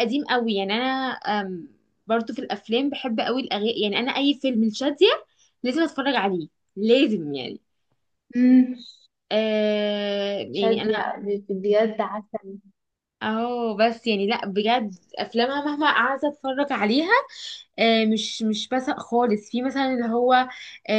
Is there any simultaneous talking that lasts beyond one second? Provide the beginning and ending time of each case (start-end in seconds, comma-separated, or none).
none